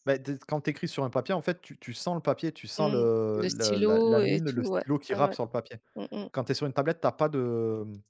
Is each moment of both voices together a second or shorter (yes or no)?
no